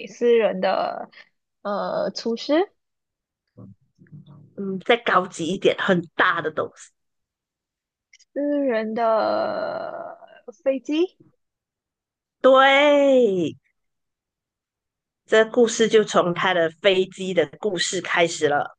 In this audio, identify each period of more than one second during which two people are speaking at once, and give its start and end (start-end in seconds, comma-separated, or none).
none